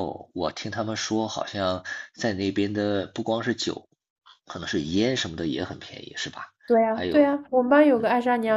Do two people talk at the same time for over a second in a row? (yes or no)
no